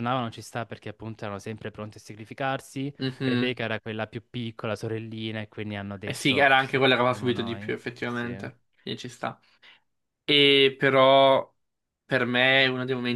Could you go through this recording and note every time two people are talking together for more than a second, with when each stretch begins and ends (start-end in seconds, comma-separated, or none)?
6.1-8.3